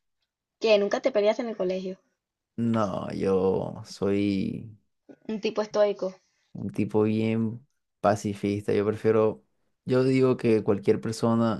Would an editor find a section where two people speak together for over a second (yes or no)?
no